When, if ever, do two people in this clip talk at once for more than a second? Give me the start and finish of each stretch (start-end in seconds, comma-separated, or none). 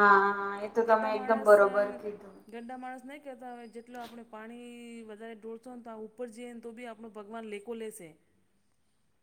none